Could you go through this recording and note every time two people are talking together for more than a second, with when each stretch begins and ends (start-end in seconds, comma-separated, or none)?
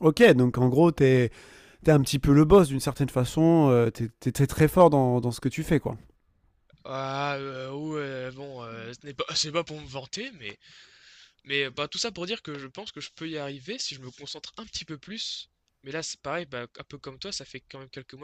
none